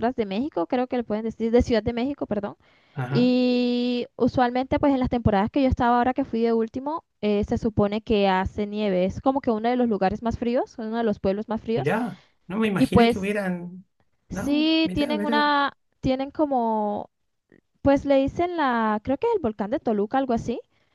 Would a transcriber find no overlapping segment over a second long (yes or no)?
no